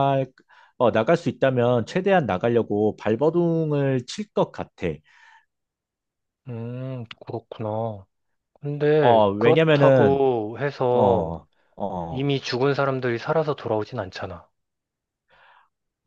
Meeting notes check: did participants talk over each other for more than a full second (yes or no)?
yes